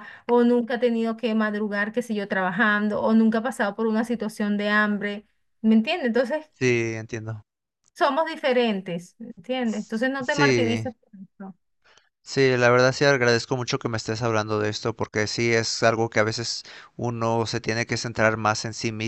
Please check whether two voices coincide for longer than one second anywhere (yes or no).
yes